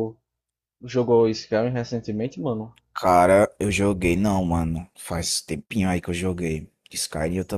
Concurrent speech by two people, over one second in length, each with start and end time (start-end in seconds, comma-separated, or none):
none